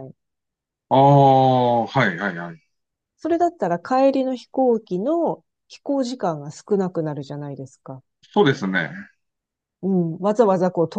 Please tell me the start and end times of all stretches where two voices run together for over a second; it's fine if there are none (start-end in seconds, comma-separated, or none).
none